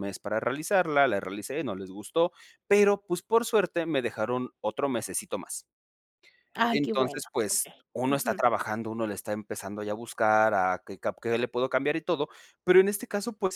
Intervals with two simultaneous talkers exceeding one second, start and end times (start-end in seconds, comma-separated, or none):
6.7-8.4